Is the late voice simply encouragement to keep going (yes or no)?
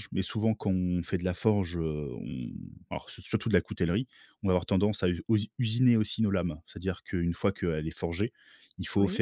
yes